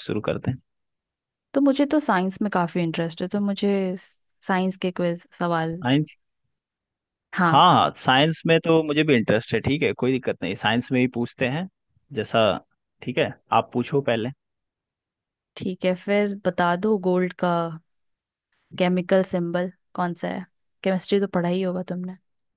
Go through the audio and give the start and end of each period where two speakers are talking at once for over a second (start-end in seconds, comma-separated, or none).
none